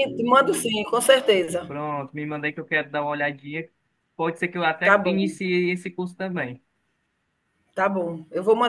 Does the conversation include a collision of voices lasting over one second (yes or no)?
no